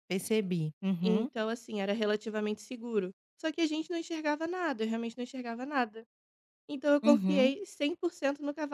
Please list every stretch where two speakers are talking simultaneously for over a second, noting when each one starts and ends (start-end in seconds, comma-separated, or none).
none